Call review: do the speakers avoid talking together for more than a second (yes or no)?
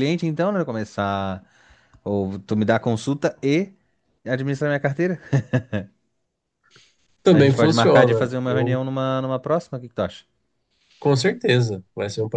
no